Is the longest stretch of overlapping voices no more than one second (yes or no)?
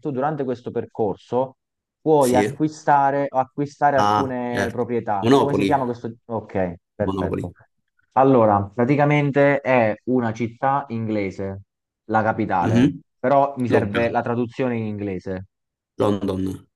no